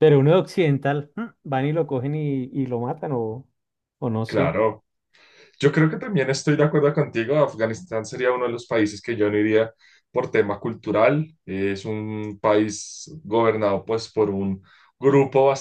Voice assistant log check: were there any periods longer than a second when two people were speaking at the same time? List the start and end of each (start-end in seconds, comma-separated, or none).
none